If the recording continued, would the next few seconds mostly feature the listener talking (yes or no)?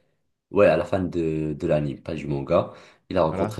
no